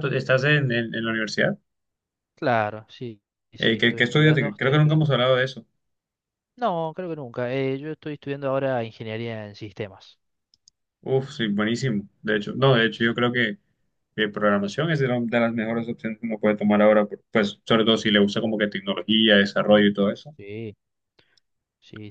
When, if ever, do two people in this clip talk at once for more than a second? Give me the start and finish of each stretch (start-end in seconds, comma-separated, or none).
3.6-5.0